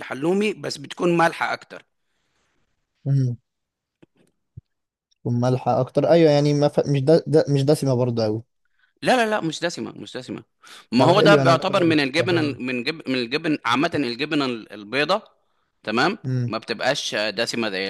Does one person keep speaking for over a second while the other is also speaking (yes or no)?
yes